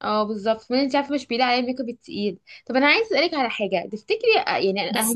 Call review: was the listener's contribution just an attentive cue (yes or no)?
yes